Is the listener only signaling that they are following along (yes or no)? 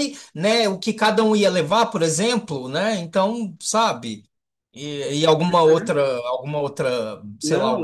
yes